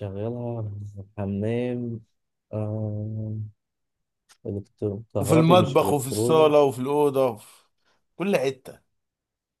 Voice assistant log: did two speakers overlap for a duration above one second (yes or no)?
yes